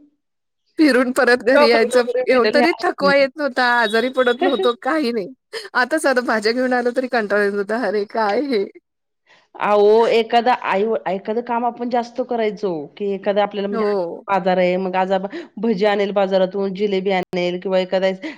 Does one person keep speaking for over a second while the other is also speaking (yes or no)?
yes